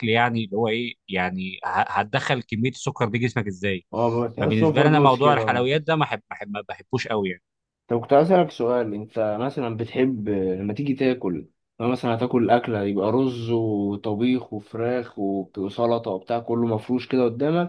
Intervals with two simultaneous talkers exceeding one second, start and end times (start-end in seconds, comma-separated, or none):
4.4-5.7